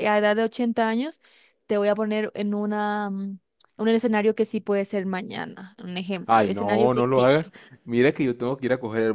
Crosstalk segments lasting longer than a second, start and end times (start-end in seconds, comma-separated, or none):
6.3-7.5